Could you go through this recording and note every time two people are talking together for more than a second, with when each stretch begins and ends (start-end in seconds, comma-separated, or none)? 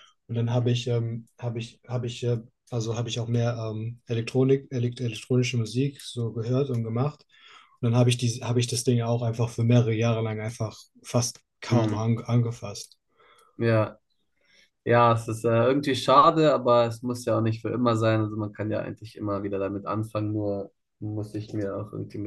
none